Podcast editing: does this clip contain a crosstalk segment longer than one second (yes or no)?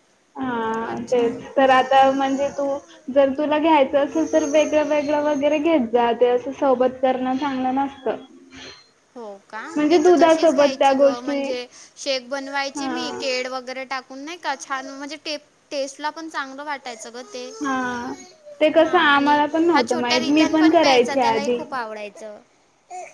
yes